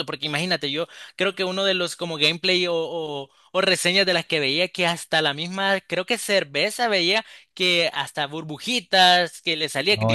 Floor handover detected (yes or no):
no